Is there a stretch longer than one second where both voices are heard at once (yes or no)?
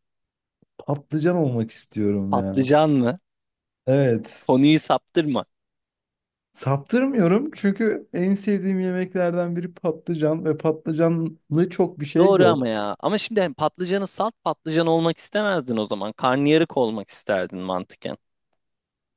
no